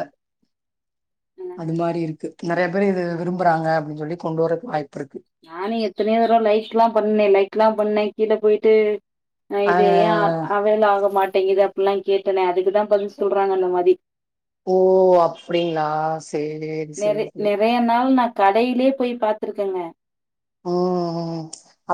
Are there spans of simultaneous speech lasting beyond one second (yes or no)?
no